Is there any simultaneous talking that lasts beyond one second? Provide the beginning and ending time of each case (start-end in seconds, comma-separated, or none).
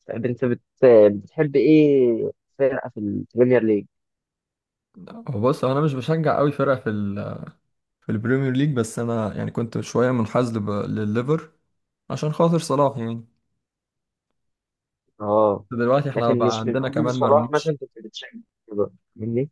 16.1-17.7